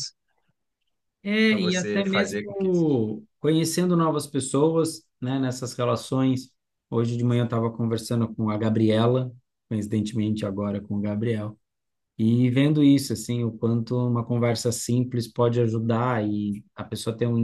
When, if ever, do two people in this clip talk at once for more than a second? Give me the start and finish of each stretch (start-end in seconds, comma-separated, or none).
1.5-3.1